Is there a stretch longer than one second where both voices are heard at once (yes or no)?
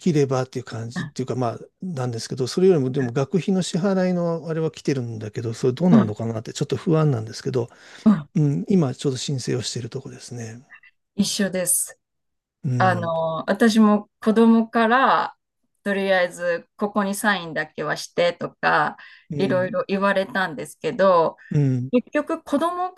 no